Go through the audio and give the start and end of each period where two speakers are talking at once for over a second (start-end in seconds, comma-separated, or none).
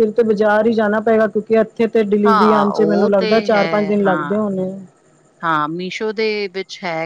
2.3-4.4